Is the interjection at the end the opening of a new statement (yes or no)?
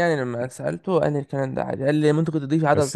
yes